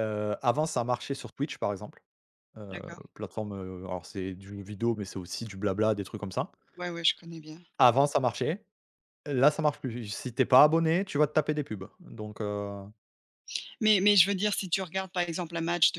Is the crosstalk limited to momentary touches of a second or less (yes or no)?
yes